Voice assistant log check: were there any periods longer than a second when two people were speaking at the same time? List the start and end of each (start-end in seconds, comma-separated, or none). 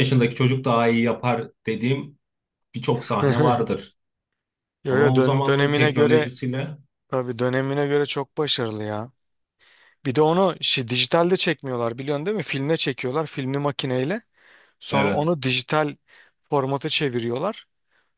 4.9-6.3